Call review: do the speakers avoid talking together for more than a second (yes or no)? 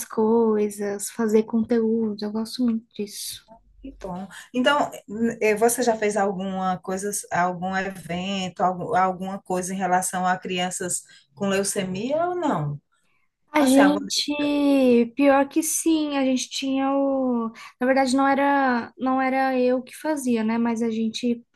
yes